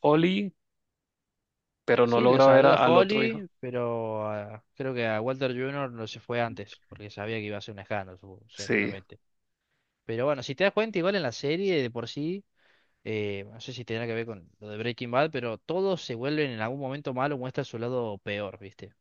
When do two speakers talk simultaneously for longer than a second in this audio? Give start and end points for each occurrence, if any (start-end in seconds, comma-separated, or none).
2.0-3.4